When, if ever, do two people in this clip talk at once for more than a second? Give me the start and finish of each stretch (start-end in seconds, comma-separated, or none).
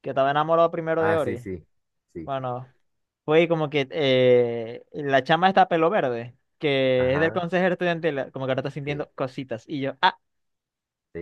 none